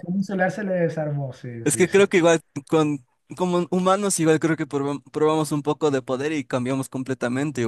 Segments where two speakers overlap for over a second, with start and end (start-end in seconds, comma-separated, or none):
none